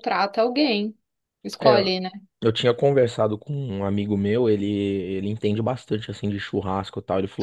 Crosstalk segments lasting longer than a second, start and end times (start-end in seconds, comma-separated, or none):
none